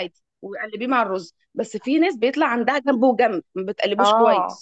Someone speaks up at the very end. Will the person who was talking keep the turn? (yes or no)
no